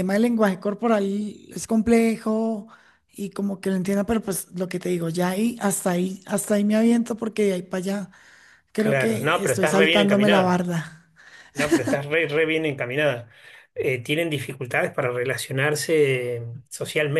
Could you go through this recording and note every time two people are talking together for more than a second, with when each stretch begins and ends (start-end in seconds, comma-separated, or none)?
8.8-10.6